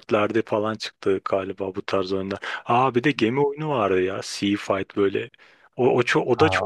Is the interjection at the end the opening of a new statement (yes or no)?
yes